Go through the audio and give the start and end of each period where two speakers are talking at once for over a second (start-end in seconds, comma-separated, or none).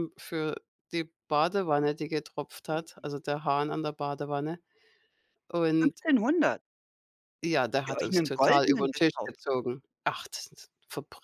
7.9-9.4